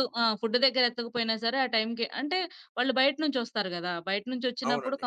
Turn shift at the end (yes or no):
no